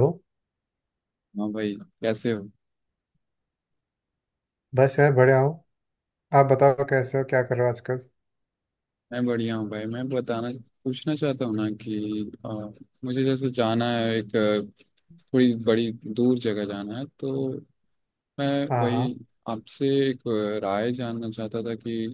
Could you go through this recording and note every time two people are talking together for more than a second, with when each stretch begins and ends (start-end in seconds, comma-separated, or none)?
none